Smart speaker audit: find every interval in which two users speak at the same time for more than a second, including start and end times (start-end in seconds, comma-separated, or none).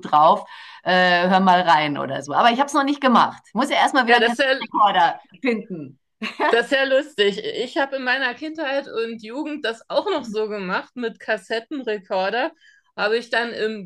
none